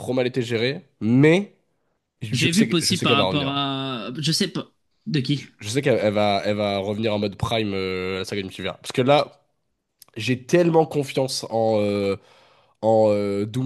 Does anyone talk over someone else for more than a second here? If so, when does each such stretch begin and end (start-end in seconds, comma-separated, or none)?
2.3-3.6